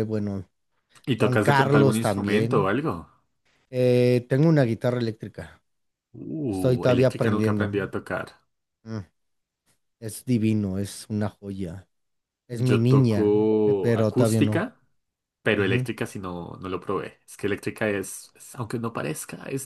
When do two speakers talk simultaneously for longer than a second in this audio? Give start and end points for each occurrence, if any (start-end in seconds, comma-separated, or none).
1.2-2.7, 6.5-7.7, 12.5-14.7